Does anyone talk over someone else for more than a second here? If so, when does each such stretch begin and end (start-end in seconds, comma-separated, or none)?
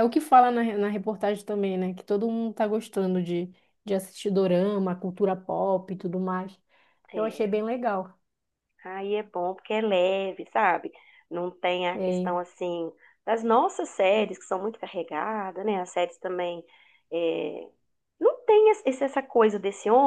none